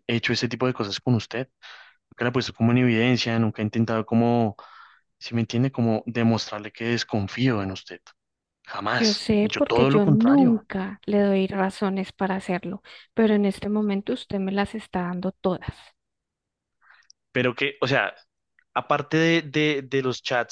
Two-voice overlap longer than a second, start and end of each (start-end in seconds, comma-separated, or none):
8.9-10.6